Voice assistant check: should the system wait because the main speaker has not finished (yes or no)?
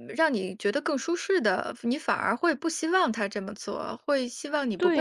no